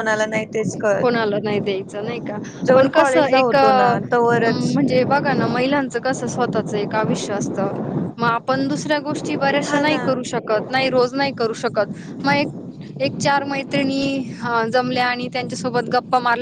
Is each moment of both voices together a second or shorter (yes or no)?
no